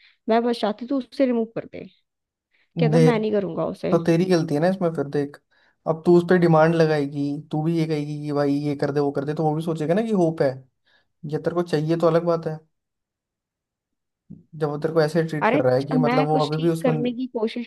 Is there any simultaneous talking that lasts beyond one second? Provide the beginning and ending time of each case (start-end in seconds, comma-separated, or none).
15.4-17.1